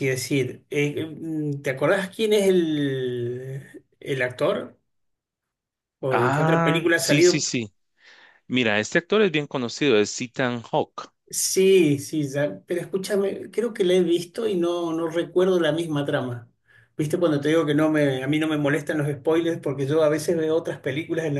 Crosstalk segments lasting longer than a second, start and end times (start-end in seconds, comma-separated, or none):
6.1-7.5